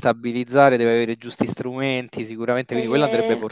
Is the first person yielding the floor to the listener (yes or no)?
yes